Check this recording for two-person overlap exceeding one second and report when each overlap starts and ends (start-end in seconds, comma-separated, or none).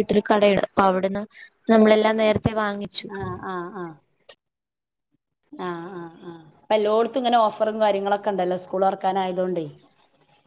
none